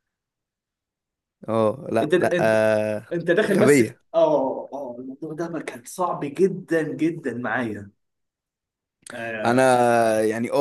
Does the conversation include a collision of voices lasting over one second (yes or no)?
no